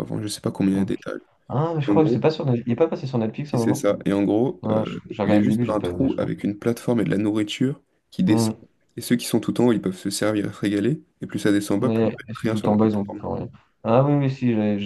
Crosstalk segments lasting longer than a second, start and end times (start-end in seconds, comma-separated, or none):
4.6-6.3, 11.8-13.2